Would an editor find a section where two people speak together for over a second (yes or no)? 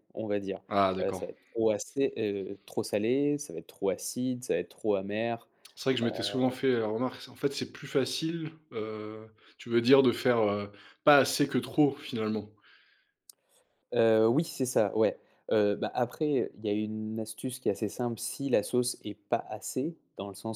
no